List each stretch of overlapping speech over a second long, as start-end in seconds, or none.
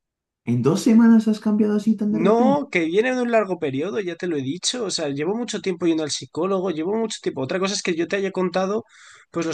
none